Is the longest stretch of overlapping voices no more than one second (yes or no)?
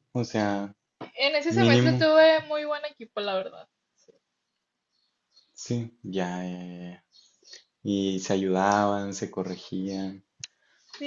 yes